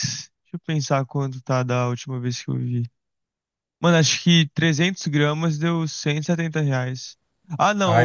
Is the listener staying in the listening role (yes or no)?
yes